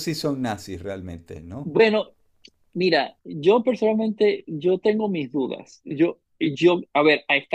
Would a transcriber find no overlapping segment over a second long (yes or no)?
yes